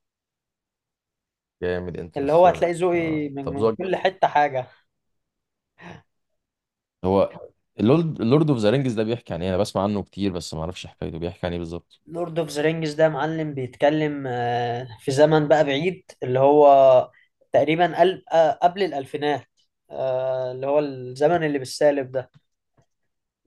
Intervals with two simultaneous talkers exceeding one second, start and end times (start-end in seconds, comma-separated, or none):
2.2-3.9